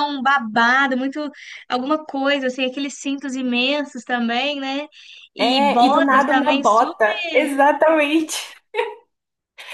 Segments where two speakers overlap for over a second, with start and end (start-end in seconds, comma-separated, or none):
5.4-7.5